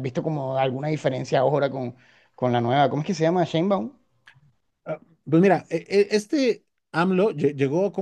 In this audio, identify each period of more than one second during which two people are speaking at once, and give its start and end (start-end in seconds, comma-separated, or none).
none